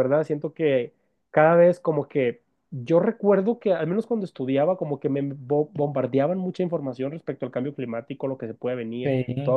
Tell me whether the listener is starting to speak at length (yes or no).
no